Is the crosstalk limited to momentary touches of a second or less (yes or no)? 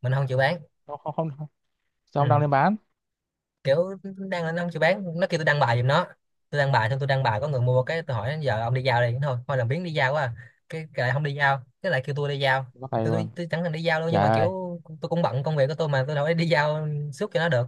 yes